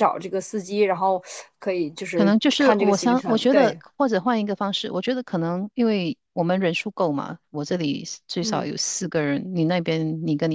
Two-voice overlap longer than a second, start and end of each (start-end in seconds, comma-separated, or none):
2.1-3.8